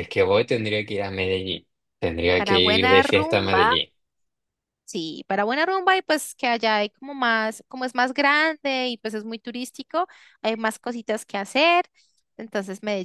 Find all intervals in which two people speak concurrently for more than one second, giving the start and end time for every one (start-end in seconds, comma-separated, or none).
2.4-3.7